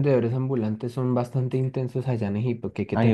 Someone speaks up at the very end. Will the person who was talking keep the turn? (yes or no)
no